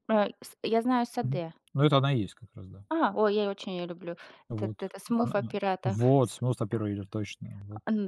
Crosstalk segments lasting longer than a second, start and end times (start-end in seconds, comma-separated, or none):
4.5-6.4